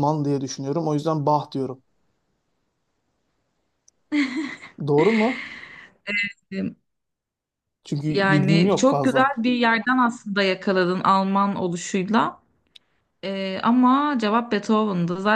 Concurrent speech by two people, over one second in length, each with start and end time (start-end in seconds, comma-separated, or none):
8.1-9.3